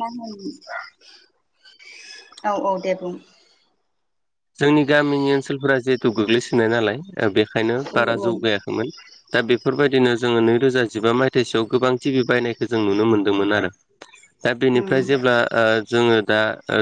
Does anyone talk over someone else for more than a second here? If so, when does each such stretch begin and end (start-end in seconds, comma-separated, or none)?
none